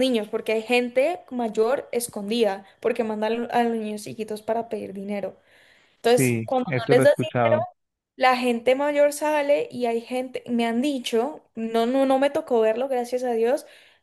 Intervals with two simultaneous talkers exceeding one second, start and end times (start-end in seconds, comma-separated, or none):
6.0-7.6